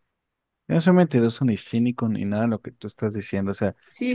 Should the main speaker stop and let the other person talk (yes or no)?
yes